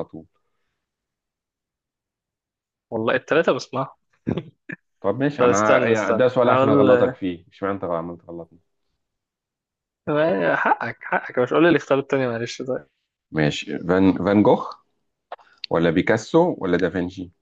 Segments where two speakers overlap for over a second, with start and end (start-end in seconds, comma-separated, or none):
5.4-7.1